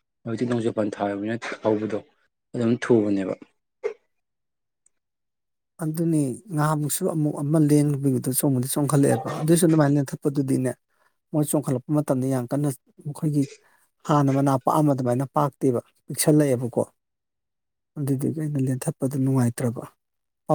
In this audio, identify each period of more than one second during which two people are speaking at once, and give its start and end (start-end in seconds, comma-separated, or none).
none